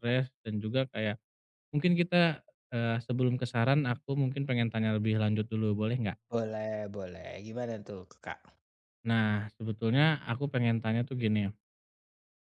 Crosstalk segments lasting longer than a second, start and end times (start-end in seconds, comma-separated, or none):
none